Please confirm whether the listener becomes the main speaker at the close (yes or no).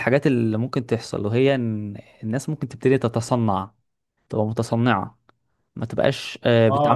yes